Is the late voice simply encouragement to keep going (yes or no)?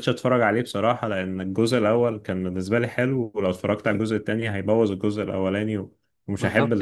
no